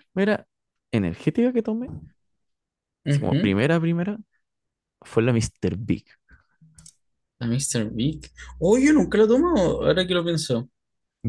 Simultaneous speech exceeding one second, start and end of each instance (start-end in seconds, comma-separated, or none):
none